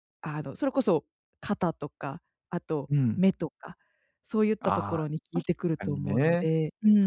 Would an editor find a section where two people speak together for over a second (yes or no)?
yes